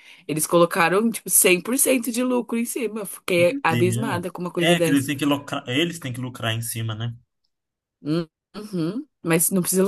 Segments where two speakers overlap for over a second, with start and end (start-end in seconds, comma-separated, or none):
3.4-5.1